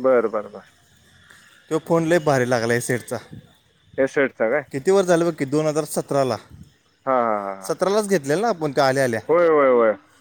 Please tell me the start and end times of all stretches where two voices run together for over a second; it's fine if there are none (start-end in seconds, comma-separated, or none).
none